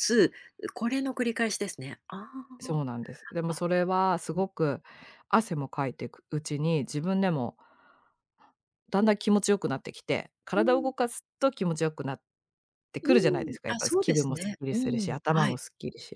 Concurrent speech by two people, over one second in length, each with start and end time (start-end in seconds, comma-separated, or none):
13.7-15.6